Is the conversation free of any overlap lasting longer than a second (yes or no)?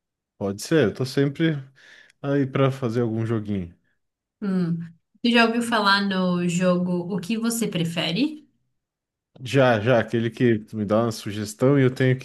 yes